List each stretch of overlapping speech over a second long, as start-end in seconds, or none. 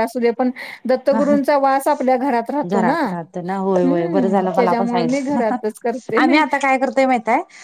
3.8-5.4